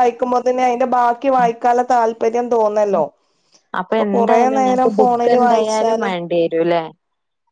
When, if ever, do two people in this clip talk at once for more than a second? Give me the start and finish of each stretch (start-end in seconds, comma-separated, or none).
4.0-6.1